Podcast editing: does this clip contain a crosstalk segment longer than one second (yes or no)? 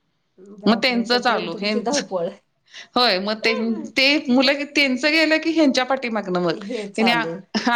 yes